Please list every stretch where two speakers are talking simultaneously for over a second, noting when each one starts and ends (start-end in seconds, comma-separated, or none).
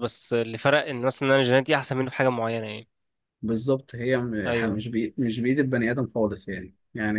none